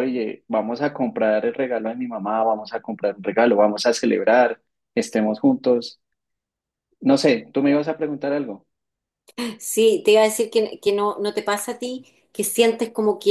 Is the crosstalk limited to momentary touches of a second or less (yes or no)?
yes